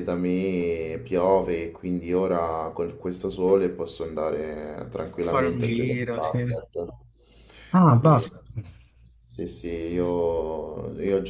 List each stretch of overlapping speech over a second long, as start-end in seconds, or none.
5.2-6.6